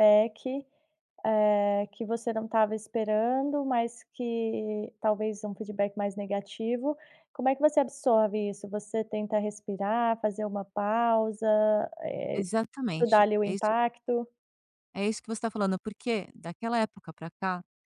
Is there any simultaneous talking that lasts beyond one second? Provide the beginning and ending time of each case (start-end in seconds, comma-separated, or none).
12.3-13.7